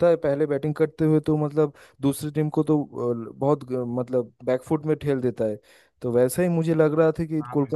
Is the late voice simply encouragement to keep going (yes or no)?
yes